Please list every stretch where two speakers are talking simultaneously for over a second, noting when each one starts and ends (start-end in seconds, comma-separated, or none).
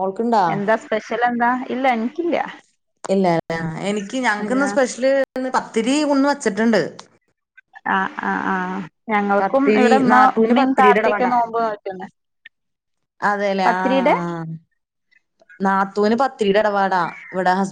9.4-11.3